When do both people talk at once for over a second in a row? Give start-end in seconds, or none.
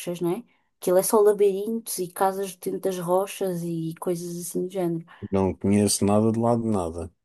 none